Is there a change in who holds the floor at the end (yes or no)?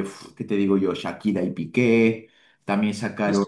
no